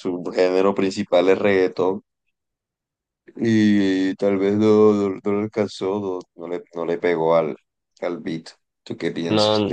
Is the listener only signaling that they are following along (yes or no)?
no